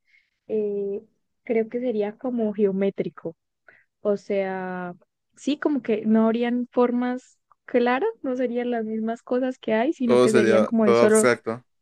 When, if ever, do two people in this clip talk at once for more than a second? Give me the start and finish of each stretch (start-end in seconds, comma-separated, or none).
10.0-11.3